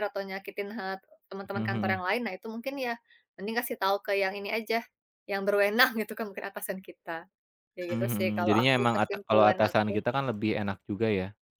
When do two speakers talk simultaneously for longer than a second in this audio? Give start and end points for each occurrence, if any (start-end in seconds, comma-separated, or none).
7.9-10.0